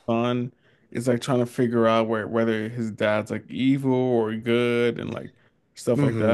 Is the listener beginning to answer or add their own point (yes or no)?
yes